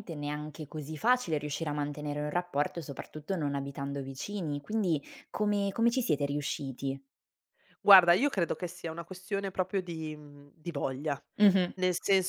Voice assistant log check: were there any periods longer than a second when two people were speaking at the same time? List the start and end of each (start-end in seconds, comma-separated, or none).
none